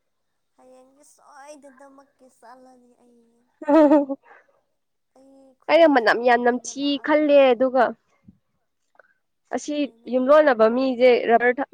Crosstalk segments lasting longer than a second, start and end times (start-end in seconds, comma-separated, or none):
5.7-7.5